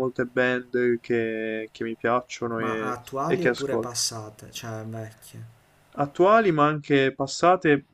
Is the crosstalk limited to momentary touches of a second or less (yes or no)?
no